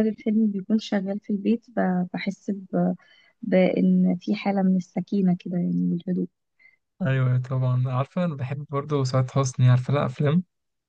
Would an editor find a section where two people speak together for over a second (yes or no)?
no